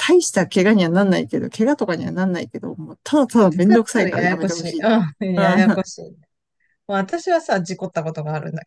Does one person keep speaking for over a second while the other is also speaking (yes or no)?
yes